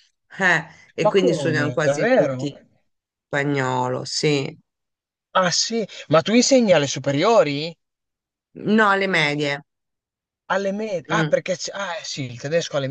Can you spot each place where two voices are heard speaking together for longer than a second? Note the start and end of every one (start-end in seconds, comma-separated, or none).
1.0-2.5